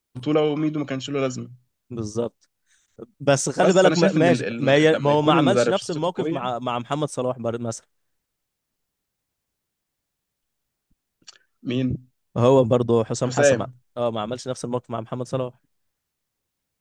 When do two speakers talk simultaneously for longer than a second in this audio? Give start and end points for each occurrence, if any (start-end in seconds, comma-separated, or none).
3.6-6.4